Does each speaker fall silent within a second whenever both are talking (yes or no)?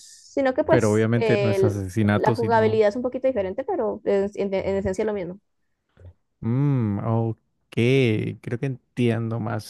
no